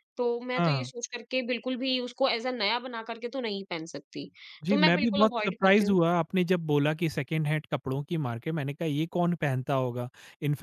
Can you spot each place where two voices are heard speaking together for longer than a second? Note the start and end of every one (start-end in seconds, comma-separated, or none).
4.7-6.0